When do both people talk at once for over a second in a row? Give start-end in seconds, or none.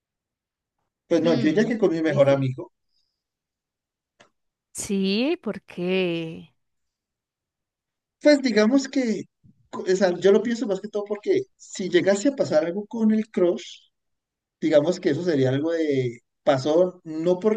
1.2-2.5